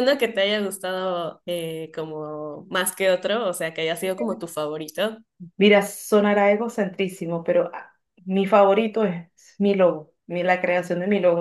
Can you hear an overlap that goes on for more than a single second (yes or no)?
no